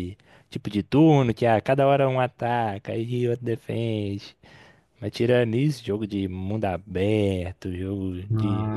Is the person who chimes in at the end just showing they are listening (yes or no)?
yes